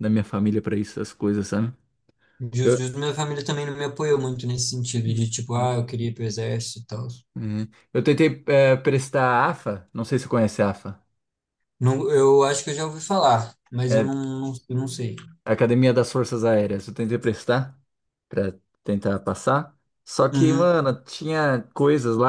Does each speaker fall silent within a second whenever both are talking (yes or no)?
yes